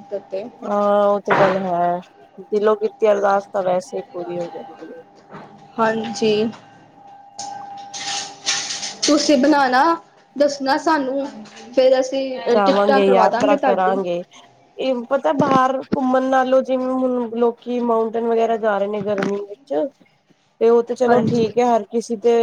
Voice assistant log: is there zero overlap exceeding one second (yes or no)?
no